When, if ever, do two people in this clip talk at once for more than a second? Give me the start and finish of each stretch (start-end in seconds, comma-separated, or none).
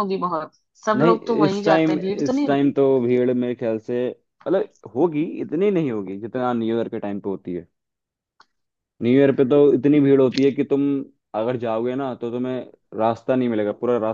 1.0-2.8